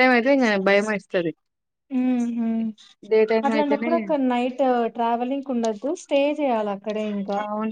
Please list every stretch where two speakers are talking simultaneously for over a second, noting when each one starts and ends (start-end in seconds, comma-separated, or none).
none